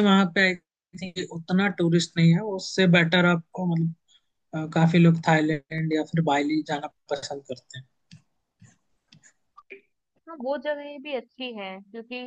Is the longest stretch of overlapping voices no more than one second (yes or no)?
yes